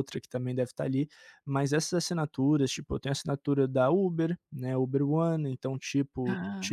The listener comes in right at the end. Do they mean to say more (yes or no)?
no